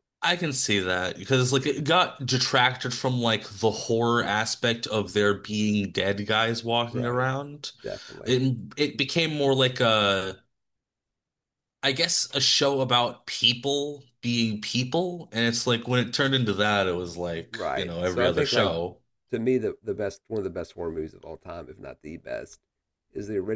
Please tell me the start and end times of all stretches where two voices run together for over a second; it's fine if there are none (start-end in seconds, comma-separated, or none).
17.5-18.8